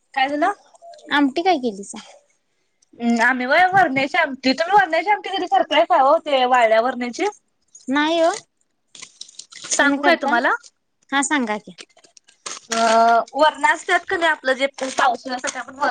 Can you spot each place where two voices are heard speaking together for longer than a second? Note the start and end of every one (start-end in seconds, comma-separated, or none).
none